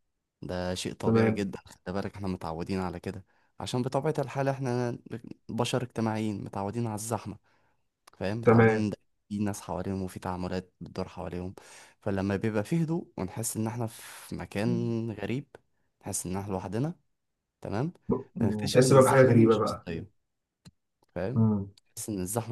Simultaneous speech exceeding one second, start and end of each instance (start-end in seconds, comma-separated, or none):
18.4-19.9